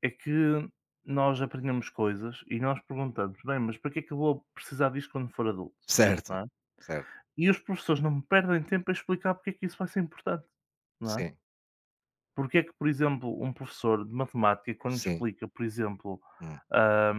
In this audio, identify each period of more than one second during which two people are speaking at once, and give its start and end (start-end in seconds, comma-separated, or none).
none